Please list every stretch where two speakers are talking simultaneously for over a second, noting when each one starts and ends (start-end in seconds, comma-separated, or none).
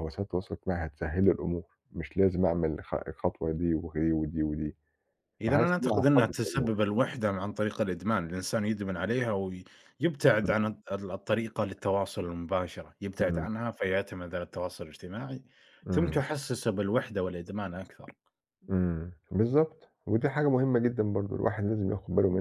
5.4-6.7